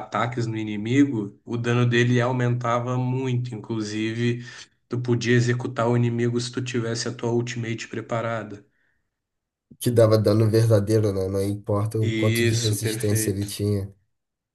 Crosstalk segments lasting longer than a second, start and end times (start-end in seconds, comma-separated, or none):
12.0-13.5